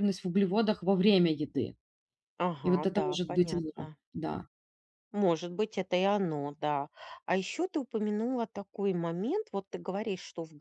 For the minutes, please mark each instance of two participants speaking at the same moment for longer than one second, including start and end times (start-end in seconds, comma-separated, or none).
2.6-4.0